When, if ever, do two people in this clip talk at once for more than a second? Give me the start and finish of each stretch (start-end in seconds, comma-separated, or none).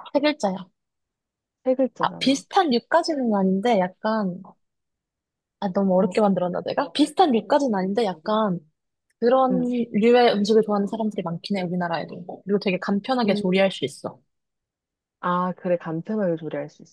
none